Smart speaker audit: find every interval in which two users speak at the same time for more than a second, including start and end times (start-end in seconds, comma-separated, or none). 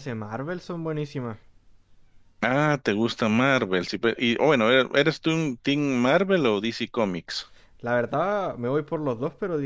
none